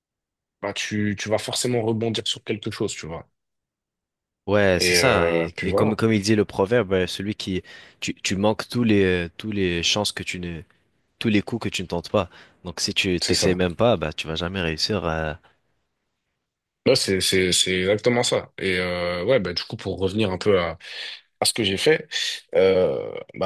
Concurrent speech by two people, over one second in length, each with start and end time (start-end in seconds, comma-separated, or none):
4.8-6.0